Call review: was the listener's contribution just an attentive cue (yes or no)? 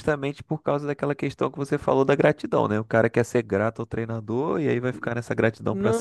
no